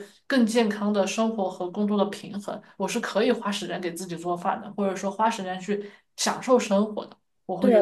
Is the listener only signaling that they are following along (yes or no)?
no